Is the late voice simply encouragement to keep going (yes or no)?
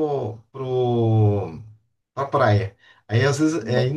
yes